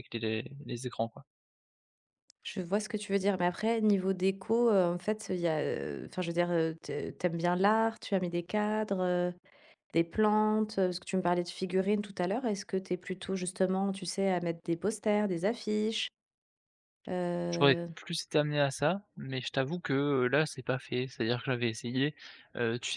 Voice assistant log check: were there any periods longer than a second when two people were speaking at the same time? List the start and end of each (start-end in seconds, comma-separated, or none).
none